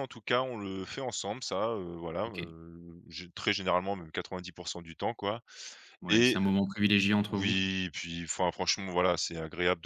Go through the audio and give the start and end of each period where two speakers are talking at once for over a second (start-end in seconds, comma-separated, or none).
none